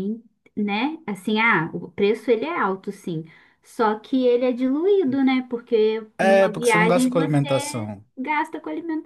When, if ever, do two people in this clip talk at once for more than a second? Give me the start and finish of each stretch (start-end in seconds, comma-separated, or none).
6.2-7.5